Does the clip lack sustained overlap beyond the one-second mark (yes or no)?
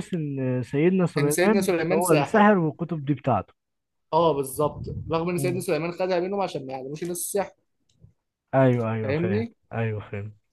no